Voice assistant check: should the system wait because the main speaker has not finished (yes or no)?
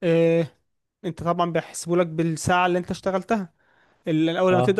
yes